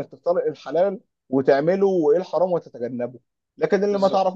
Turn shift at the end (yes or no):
no